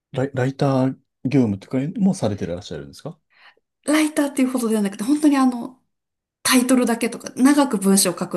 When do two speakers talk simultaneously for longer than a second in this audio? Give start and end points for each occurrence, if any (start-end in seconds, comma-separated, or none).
none